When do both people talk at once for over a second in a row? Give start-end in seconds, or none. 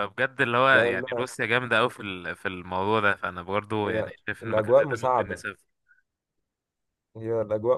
3.8-5.4